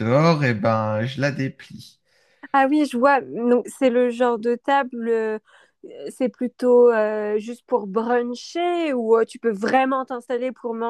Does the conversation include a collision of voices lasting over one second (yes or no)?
no